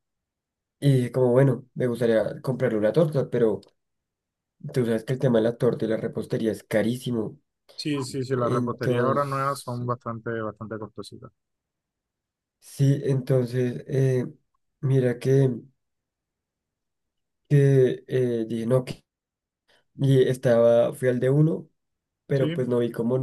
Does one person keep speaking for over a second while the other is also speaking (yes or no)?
yes